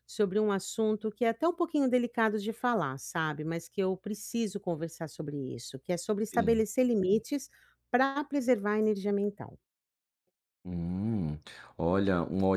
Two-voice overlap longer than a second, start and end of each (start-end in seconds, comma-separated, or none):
none